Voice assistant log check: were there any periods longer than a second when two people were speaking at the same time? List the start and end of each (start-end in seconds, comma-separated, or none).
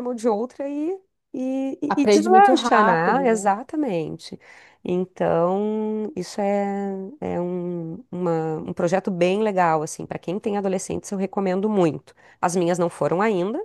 1.9-3.5